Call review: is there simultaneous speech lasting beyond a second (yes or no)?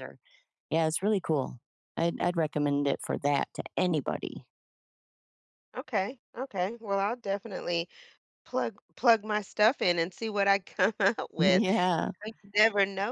no